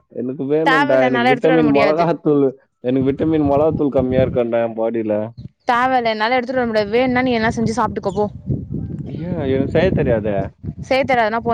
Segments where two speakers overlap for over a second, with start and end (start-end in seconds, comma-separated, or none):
0.7-2.0